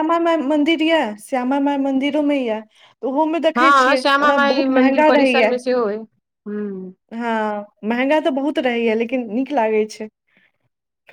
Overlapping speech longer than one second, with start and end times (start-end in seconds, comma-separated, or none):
3.6-5.5